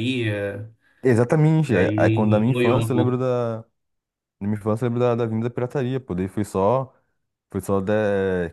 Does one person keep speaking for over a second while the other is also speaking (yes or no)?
yes